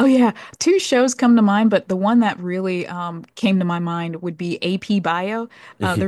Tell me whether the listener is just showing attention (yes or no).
yes